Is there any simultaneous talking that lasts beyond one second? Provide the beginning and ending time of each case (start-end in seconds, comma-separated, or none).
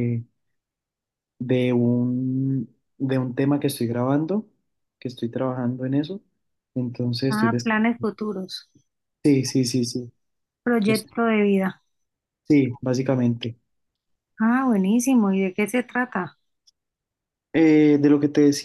none